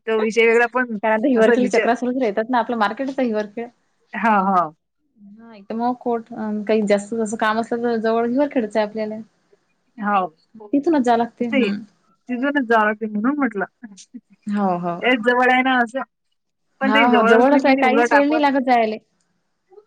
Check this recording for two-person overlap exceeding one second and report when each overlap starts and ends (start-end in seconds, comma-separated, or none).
16.9-18.4